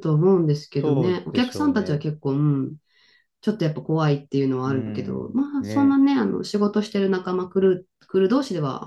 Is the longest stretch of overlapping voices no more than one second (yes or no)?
no